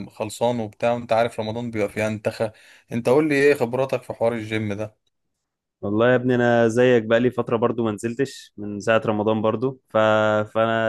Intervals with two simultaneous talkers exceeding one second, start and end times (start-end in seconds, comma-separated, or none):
none